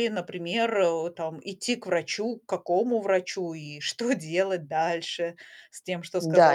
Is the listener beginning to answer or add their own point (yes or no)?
yes